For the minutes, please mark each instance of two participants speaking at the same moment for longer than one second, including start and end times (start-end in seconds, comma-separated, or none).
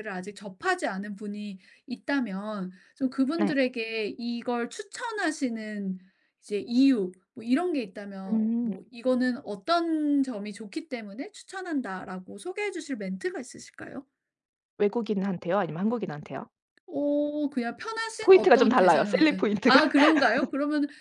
18.2-19.8